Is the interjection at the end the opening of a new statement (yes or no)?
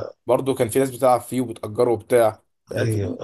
yes